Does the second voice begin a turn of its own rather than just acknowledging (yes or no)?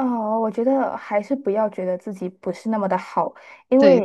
no